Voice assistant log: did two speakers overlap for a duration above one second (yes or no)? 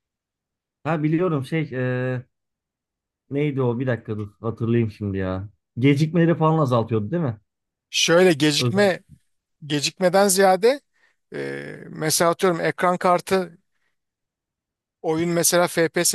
no